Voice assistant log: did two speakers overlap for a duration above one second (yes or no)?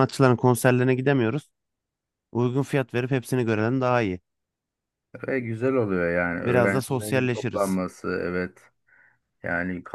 yes